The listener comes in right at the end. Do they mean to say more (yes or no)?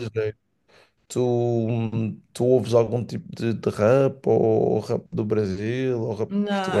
yes